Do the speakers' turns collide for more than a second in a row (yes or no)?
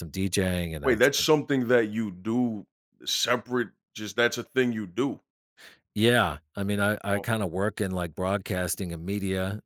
no